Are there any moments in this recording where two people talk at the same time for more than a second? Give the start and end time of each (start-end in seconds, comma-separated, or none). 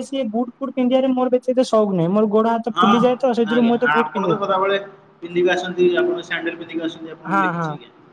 none